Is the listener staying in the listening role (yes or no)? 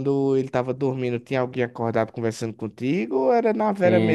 no